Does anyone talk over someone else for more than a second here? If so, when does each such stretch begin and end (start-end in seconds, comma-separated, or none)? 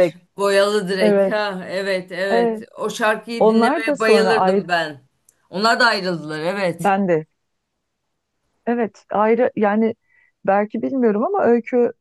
3.4-4.6